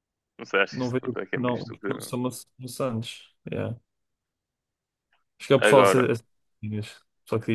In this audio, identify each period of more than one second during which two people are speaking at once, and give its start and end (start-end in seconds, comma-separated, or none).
0.7-2.1